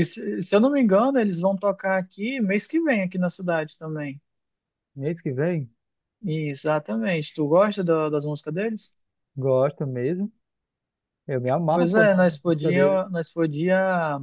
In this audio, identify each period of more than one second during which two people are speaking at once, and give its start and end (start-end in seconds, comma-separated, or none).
11.7-13.0